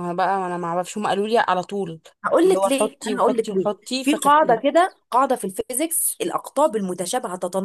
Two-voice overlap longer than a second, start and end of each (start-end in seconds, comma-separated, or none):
2.4-4.8